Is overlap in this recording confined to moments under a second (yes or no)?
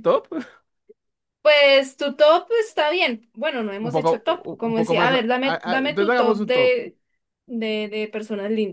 no